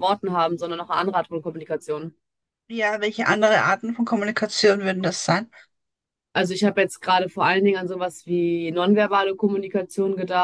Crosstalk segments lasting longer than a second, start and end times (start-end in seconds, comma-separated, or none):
none